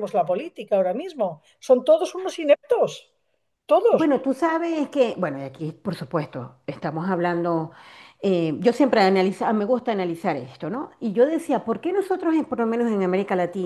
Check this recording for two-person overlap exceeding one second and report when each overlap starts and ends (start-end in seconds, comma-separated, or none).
none